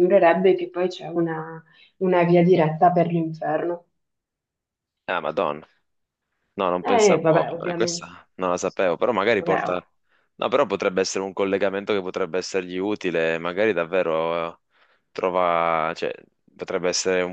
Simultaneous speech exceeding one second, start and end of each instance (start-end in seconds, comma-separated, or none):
6.8-8.1